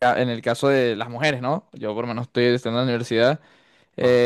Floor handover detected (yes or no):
no